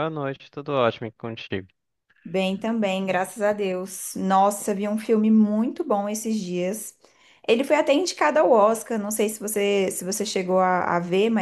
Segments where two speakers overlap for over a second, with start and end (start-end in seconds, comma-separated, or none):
none